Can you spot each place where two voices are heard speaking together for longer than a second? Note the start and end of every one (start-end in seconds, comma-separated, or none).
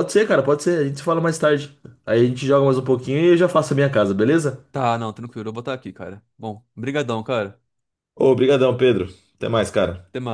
none